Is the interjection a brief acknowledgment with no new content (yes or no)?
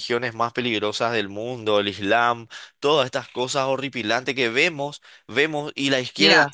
no